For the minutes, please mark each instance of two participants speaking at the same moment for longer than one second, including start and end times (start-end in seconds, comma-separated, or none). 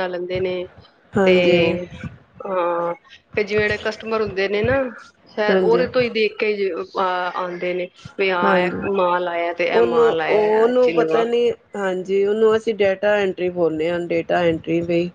none